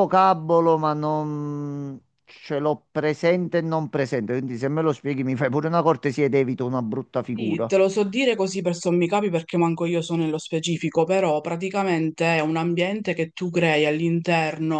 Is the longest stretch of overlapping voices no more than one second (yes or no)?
yes